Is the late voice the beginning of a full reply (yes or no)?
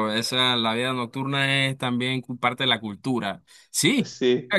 no